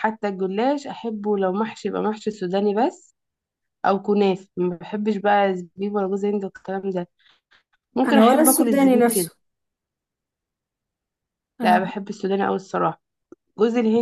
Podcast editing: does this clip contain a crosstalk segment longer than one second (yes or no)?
yes